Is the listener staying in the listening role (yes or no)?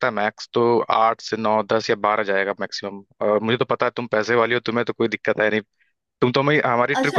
no